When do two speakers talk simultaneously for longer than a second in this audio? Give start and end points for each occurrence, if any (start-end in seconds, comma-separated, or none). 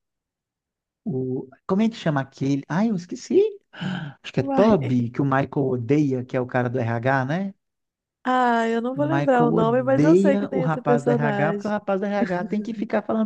8.9-11.7